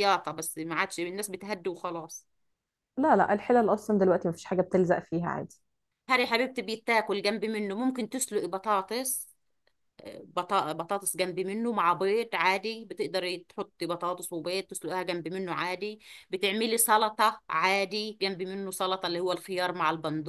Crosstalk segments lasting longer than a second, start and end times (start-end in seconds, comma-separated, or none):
none